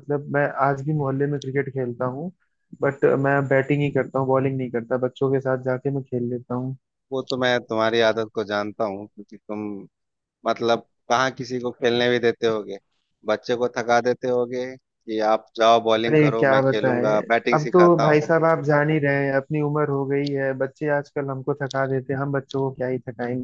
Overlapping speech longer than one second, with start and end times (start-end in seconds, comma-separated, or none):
16.1-18.3